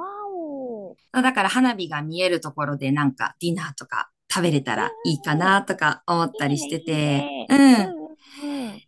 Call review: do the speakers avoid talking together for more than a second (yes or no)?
no